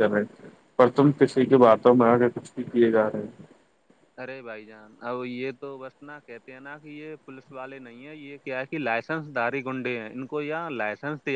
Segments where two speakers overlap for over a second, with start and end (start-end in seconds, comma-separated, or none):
none